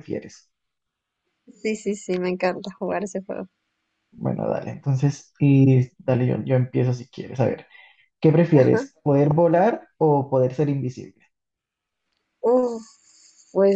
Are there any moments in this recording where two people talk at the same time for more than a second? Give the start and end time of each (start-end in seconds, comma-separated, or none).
none